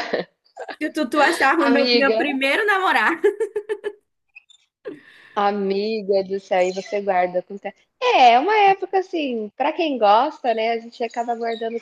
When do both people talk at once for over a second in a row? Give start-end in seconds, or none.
none